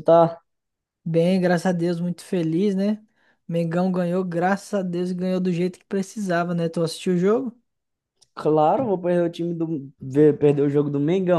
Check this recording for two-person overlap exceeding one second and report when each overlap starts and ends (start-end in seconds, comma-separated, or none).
none